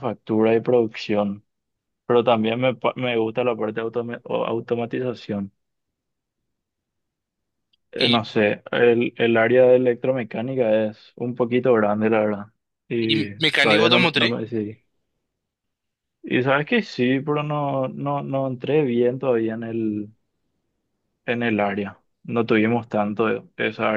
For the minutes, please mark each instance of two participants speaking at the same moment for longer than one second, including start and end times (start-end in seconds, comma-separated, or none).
13.0-14.4